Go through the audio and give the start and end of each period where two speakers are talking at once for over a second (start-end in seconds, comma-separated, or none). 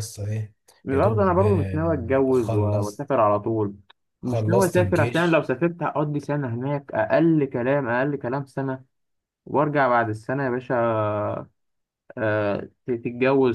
0.9-3.0, 4.2-5.5